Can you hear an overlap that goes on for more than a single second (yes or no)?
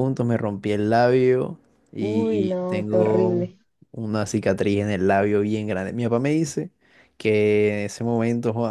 yes